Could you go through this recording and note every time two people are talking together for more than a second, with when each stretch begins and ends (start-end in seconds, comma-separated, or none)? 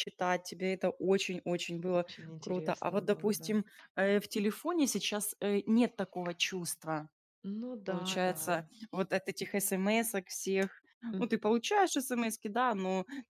1.9-3.6